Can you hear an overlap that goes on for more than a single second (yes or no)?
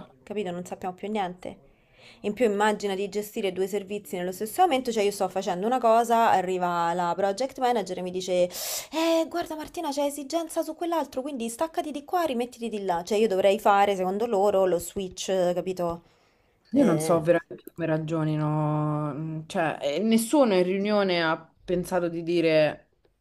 no